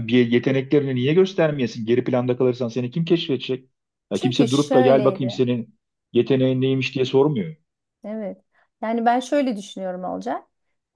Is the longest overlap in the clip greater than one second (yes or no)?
yes